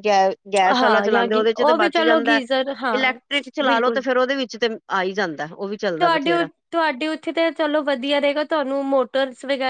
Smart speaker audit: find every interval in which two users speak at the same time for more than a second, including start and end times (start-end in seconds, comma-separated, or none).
0.8-2.4